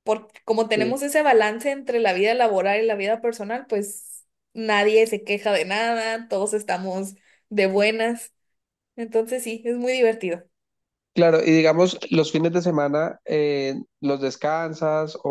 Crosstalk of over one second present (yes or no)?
no